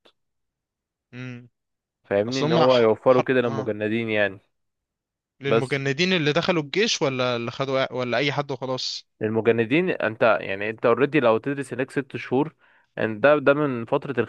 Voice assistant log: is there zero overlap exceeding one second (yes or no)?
no